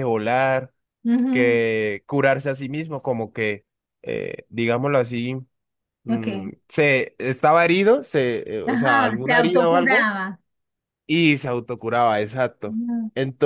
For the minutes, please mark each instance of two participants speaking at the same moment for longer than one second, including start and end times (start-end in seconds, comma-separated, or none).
8.6-10.1